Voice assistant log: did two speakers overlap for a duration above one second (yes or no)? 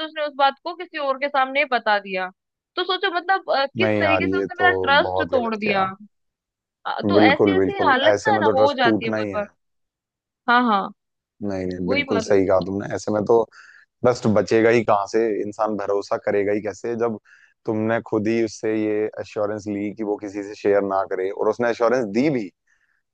yes